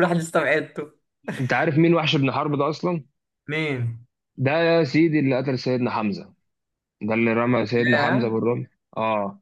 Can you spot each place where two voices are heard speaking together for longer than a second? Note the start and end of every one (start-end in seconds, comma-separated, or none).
none